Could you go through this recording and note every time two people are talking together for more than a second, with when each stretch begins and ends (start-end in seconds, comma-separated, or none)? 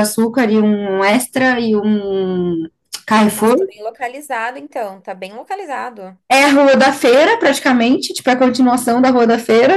none